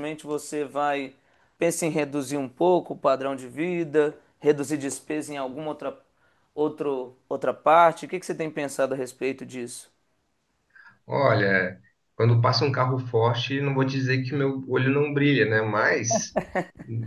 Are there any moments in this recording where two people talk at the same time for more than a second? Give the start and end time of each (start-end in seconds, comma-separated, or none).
none